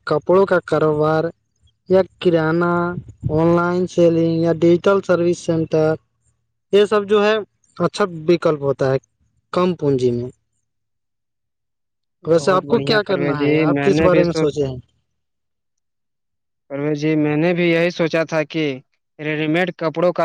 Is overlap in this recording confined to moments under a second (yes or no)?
no